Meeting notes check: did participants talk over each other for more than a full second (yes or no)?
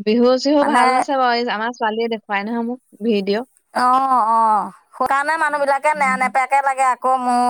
no